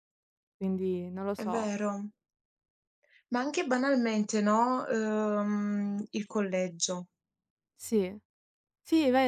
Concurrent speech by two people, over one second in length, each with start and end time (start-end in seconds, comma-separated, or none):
none